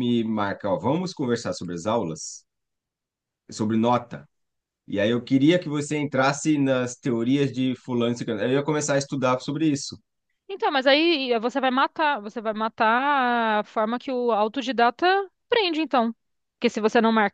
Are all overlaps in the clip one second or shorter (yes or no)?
yes